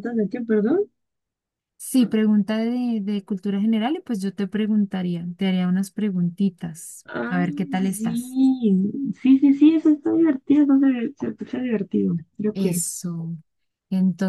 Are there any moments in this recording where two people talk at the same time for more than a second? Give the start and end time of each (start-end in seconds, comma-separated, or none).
7.0-8.4